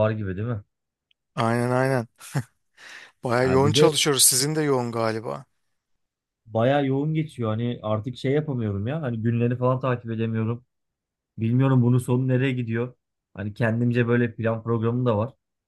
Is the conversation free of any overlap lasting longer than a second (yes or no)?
yes